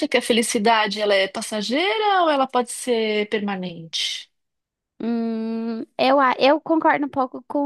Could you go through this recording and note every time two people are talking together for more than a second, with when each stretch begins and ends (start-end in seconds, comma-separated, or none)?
none